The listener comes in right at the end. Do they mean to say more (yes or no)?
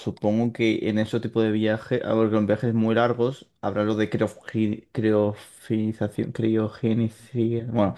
yes